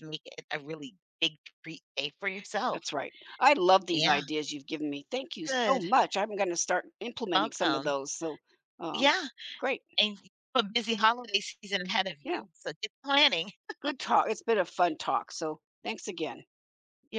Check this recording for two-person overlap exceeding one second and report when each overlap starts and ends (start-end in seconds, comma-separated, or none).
none